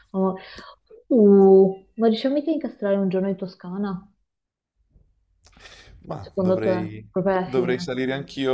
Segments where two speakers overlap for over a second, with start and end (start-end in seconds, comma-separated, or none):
6.2-7.9